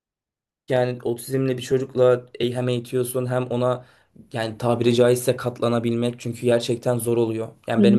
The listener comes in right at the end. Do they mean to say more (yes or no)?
no